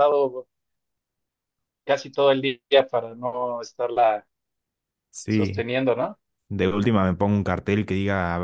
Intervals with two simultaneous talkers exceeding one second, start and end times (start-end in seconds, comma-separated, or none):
none